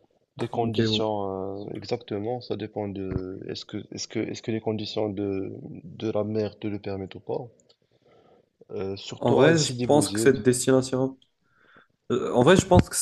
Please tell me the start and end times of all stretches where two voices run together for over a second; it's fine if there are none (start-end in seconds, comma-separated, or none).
9.2-10.4